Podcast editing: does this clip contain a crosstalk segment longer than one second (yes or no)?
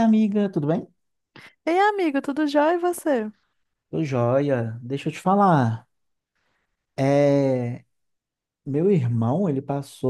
no